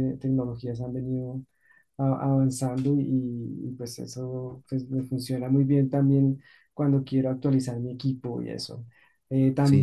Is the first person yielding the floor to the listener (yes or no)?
no